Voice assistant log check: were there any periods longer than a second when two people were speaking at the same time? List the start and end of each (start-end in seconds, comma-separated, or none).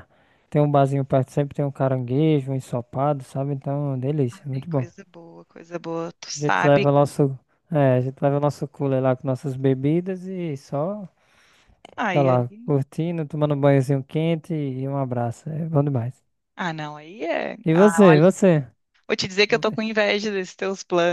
none